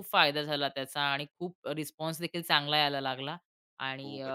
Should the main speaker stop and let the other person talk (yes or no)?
no